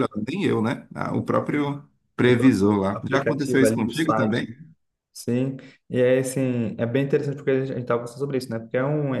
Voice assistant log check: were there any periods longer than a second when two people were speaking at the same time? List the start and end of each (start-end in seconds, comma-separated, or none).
2.3-4.4